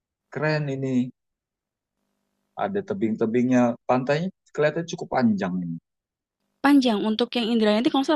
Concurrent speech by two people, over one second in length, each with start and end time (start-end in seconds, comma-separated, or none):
none